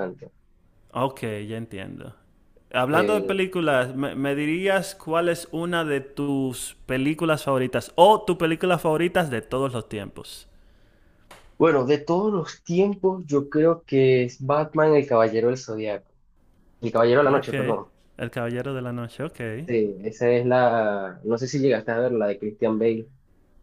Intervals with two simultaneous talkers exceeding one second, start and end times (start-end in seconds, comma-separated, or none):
none